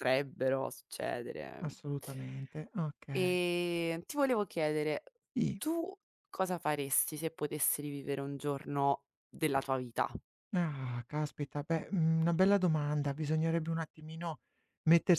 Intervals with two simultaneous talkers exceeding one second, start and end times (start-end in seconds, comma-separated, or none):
none